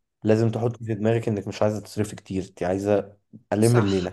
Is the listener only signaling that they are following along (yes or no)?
no